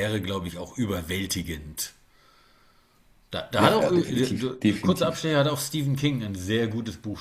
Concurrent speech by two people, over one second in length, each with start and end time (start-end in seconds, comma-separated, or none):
3.6-5.3